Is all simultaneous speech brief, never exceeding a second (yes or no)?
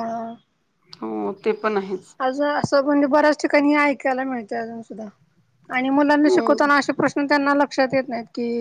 yes